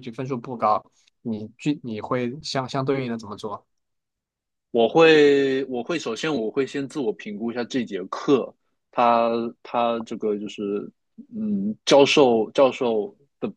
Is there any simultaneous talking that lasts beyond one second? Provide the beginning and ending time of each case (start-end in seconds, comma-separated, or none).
none